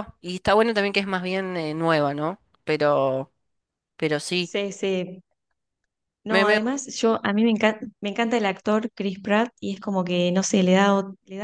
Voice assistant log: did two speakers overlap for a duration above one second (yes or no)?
no